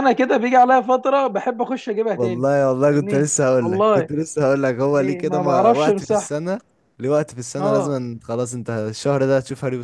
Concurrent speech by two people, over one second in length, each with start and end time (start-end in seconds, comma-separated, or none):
2.2-4.1, 4.9-6.3